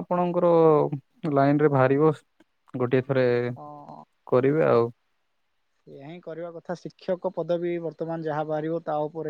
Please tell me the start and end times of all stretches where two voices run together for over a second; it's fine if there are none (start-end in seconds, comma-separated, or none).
none